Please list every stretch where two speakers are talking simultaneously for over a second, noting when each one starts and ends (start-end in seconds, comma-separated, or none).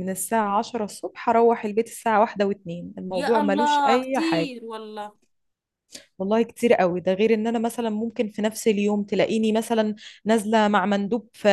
3.1-4.5